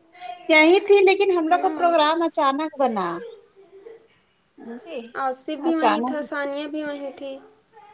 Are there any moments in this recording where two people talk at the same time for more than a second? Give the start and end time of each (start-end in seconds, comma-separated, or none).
none